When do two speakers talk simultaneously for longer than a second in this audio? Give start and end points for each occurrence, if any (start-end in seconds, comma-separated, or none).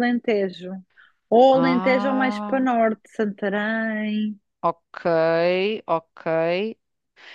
1.5-2.8